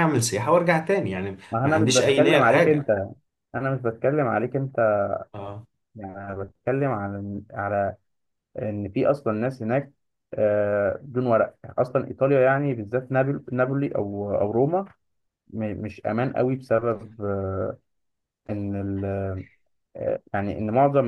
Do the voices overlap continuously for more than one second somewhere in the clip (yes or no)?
yes